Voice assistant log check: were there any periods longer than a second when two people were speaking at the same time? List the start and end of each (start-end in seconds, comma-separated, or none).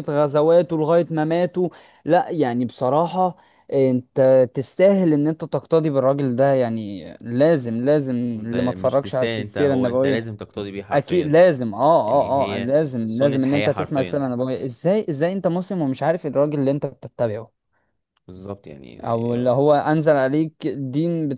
8.4-10.3, 12.0-14.2